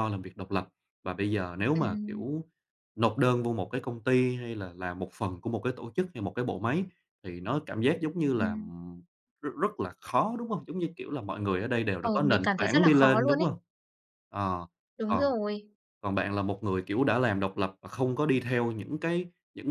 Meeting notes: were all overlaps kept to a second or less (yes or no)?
no